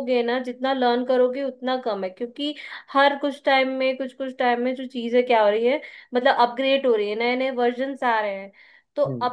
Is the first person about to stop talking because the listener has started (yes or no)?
no